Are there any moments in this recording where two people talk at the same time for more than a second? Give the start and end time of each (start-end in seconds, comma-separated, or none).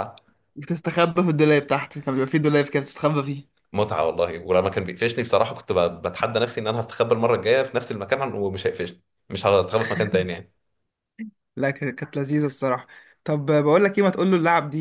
none